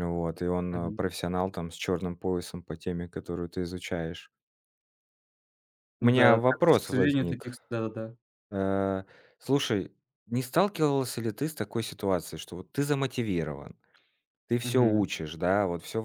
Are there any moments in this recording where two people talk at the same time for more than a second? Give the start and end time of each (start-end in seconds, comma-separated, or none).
6.0-7.5